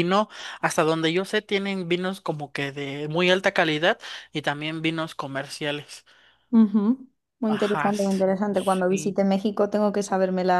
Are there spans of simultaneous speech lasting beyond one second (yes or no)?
yes